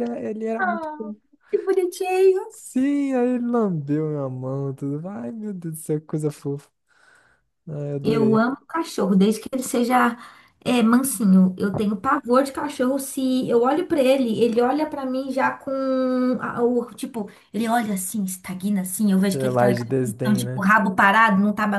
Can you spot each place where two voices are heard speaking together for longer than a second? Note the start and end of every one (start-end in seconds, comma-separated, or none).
19.3-20.7